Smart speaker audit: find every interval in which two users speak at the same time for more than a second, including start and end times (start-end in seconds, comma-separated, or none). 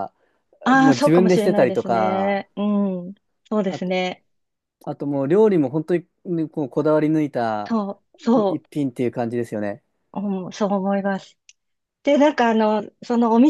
0.8-2.4